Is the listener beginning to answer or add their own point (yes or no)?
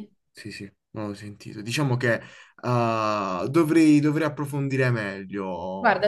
yes